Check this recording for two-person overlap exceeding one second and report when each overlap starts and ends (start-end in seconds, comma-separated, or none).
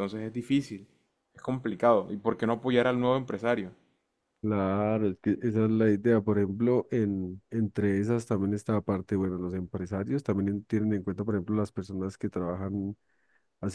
none